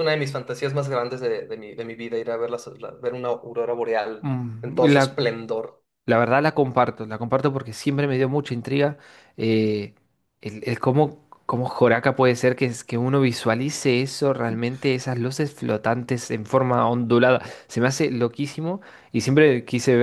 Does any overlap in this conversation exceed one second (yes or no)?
no